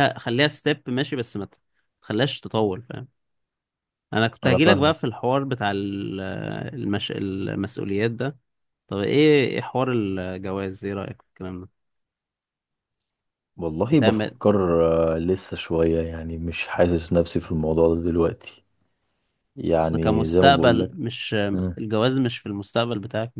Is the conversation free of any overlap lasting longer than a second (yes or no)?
no